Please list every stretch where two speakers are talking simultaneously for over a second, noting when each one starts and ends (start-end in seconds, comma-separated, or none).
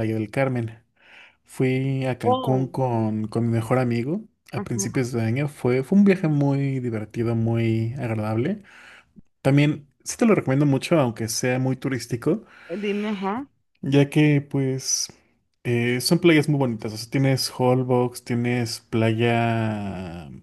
none